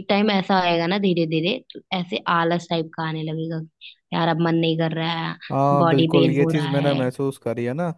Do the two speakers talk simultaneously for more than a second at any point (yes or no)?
yes